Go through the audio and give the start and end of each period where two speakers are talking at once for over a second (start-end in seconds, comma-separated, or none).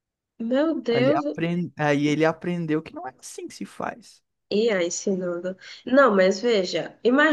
none